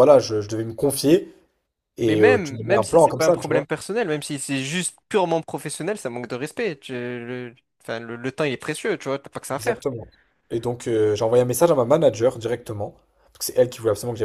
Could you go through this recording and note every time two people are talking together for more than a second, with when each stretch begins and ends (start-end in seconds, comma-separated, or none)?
2.0-3.7